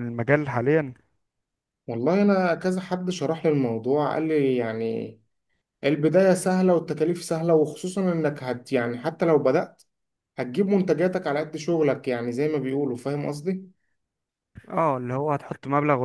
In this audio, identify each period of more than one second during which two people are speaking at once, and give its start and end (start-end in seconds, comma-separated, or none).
none